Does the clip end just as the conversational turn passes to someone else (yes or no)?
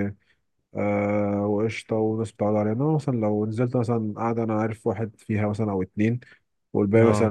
no